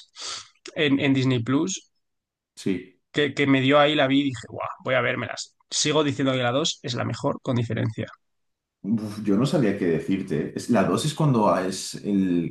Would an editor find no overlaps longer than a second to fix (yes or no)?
yes